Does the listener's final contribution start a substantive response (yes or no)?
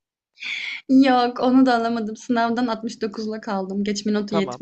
yes